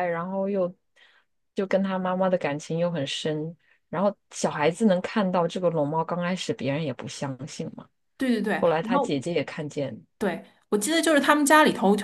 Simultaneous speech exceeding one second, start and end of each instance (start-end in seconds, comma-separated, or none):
none